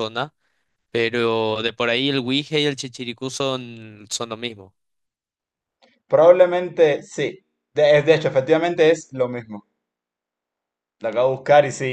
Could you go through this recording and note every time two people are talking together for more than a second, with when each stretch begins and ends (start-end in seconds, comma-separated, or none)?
none